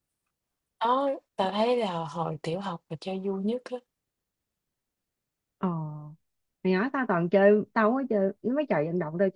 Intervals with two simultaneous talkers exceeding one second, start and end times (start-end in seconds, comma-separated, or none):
none